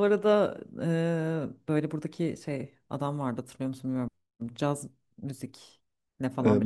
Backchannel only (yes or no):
no